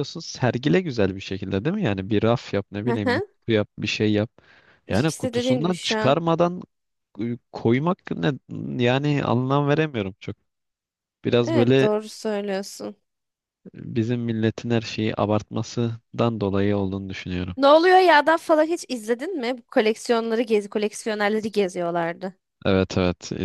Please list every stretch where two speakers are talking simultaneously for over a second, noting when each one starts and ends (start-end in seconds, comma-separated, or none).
4.9-6.2